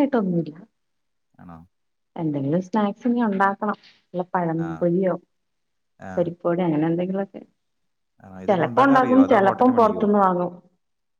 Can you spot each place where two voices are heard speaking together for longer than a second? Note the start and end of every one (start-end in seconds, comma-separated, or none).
8.5-10.0